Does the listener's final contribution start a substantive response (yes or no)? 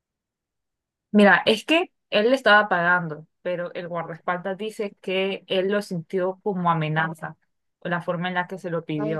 yes